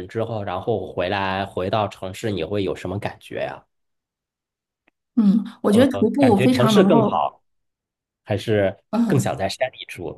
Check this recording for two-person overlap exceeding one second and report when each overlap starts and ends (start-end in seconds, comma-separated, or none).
5.7-7.2